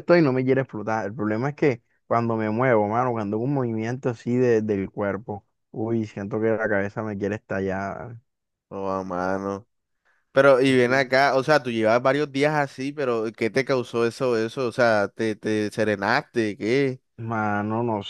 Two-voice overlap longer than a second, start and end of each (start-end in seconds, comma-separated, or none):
none